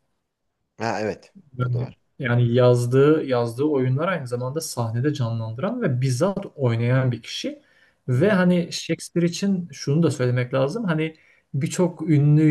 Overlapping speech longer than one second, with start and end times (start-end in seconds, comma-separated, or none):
none